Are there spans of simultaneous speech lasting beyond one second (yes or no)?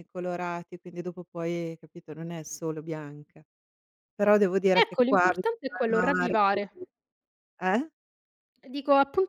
yes